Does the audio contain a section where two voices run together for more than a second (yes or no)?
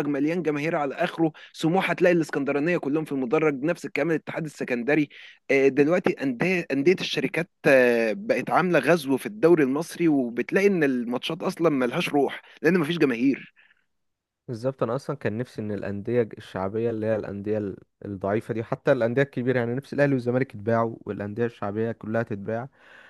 no